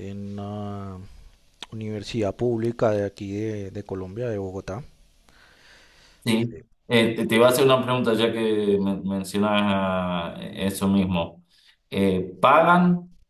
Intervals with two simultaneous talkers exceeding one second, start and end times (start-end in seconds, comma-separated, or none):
none